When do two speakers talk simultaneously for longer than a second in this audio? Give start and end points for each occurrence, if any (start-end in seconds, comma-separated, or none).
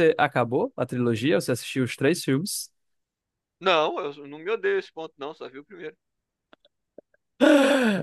none